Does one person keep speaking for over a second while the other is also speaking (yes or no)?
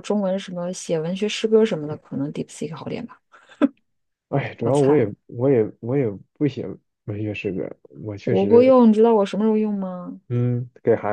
no